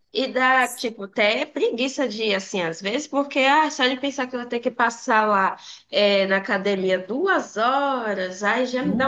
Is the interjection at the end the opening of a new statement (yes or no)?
no